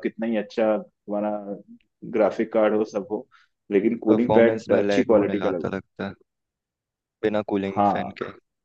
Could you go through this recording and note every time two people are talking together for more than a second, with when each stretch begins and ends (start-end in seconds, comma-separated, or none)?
4.1-5.8